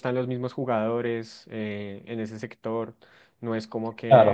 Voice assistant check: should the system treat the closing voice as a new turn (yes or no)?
yes